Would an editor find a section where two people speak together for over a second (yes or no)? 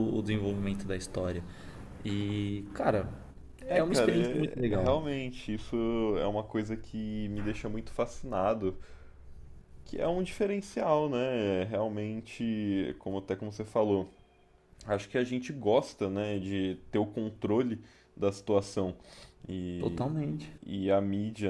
yes